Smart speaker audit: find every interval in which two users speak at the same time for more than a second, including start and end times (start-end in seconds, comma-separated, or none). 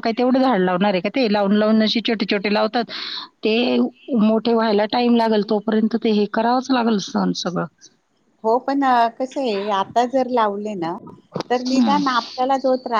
none